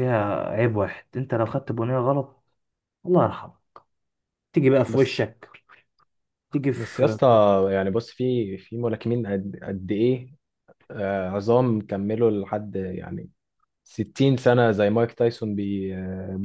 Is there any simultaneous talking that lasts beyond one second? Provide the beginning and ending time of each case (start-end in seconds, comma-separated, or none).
none